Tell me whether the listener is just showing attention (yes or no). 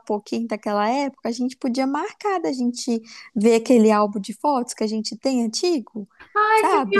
no